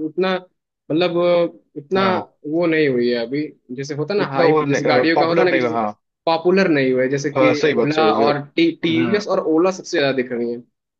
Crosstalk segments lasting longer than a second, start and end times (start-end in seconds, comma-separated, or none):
4.2-5.8, 7.4-9.2